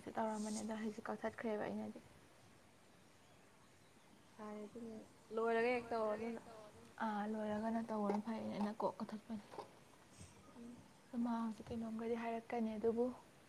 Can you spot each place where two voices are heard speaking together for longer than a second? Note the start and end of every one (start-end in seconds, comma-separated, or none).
none